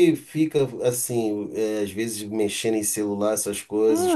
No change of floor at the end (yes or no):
no